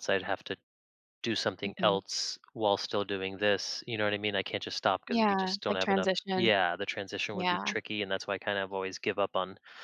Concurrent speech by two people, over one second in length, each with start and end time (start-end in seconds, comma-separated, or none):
5.1-6.5